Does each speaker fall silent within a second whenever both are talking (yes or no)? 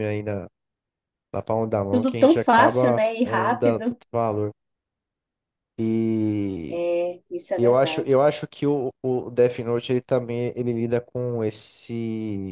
no